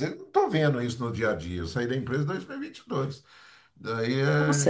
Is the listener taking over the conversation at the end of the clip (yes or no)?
yes